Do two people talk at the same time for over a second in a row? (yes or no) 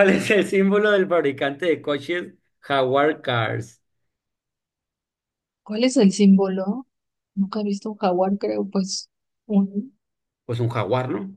no